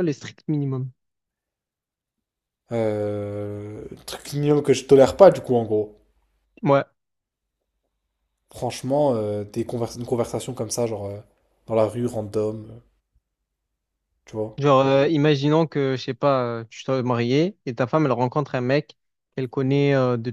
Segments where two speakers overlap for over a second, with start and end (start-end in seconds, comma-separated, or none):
none